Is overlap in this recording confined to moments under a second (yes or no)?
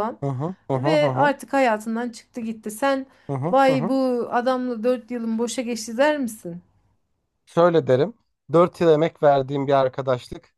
yes